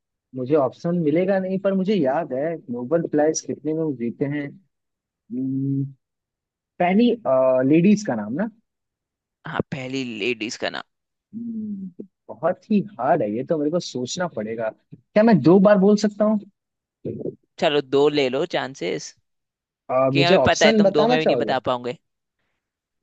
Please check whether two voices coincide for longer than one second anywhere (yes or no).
yes